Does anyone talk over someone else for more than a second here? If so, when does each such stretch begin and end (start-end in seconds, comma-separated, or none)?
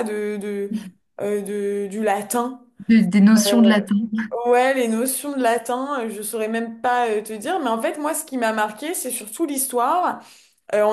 none